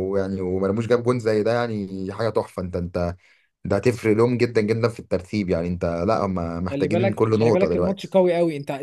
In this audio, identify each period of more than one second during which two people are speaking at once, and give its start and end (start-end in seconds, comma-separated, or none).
6.7-8.2